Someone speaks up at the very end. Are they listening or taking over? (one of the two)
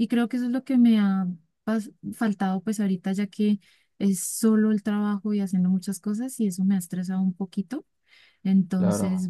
listening